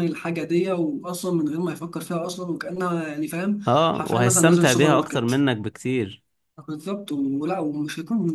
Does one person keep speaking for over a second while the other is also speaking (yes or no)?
yes